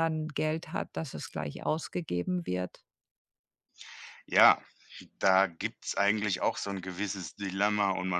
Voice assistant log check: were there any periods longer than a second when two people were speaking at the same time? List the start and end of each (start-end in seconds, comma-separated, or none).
none